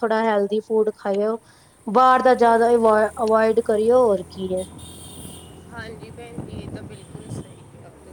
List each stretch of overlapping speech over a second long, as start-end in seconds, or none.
none